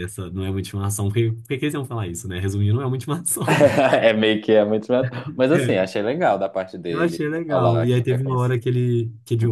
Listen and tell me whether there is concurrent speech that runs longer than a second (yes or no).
yes